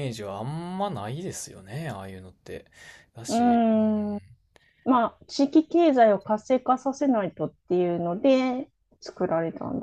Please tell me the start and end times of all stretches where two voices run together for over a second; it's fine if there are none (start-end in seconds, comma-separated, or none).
none